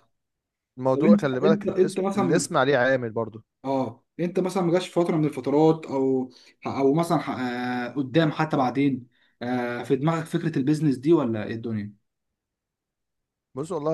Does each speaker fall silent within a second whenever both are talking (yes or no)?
no